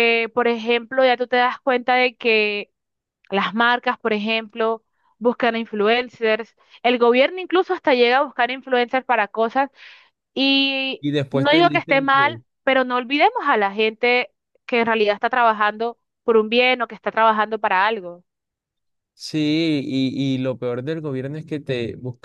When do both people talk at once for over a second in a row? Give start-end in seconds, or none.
11.0-12.4